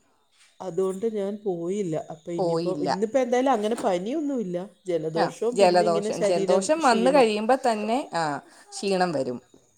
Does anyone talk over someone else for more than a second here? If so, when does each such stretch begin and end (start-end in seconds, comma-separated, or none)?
5.2-7.3